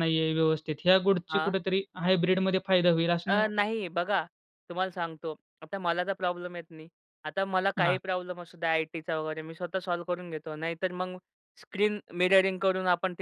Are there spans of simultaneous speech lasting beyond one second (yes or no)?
no